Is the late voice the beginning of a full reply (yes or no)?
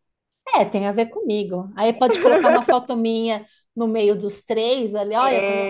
yes